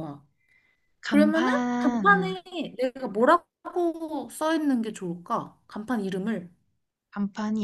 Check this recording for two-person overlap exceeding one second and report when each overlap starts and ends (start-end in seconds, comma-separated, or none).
1.1-2.4